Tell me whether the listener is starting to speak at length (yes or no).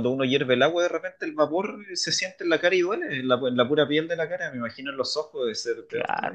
yes